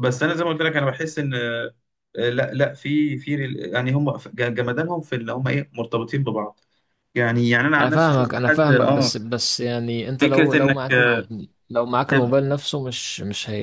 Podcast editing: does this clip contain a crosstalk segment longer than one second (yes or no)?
yes